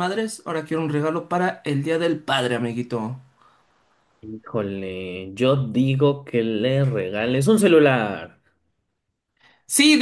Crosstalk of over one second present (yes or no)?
no